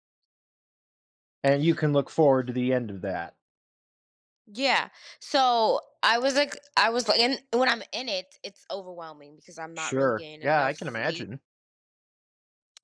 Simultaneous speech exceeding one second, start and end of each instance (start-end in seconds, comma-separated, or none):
9.8-11.3